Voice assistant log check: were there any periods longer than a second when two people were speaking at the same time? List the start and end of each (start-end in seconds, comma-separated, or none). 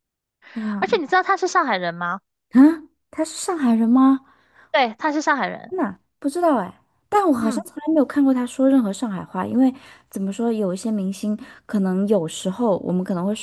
none